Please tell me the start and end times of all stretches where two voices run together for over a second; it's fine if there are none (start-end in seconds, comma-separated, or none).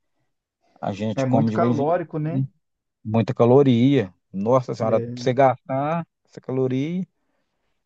1.1-2.4